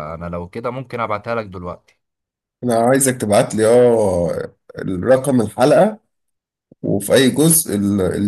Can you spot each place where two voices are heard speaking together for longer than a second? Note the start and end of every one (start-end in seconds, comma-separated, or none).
none